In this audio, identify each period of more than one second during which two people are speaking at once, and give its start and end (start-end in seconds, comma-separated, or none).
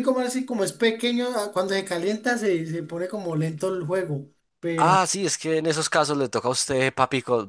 none